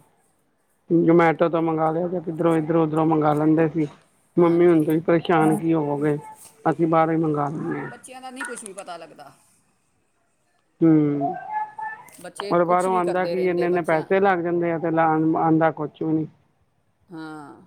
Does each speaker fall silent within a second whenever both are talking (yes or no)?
no